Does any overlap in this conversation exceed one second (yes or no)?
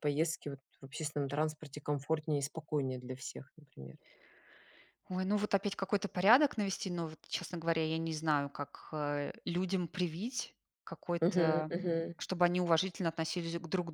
no